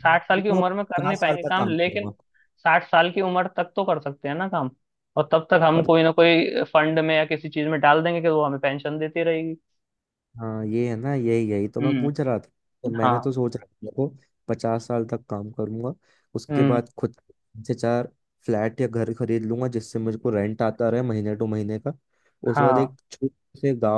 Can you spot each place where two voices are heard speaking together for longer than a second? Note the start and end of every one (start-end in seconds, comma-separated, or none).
0.6-2.0